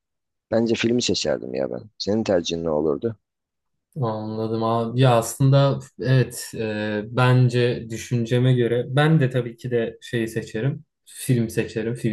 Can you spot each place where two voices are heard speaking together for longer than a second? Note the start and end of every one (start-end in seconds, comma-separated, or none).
none